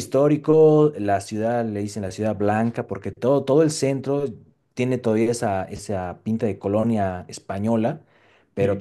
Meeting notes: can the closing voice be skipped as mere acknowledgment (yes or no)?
yes